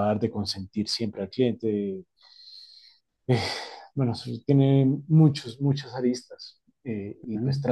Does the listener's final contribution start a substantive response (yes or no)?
no